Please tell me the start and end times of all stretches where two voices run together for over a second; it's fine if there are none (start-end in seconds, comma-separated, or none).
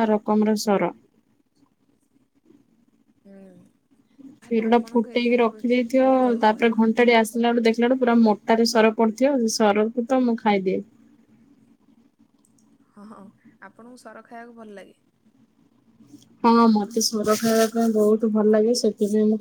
4.4-6.7